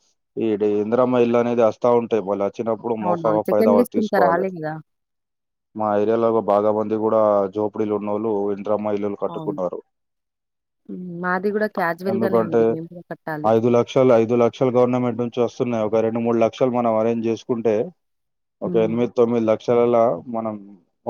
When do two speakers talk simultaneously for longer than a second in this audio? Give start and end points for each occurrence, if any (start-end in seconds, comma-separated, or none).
3.1-4.5